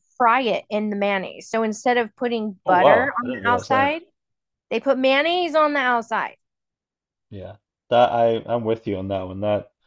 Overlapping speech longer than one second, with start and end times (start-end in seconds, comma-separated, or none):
2.7-3.9